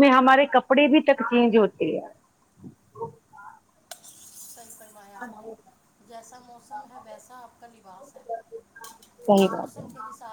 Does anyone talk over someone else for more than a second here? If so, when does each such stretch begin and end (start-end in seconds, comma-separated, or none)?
none